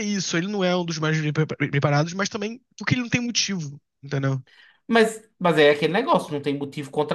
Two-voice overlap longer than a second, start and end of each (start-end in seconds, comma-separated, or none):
none